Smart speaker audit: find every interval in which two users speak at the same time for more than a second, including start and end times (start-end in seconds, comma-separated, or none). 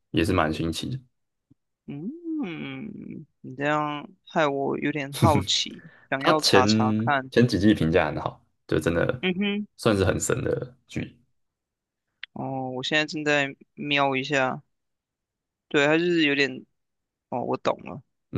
none